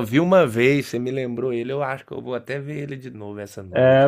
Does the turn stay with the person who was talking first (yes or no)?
no